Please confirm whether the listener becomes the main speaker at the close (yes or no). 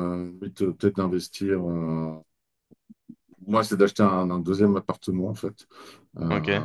no